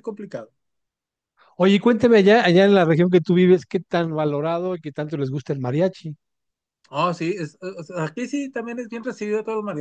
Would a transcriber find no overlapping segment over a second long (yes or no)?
yes